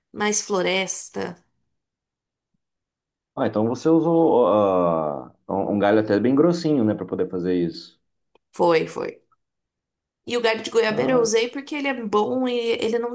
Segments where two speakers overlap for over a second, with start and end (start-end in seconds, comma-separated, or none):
none